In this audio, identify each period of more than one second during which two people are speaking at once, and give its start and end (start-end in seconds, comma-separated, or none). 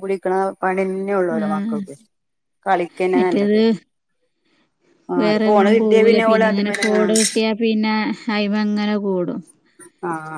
5.2-7.1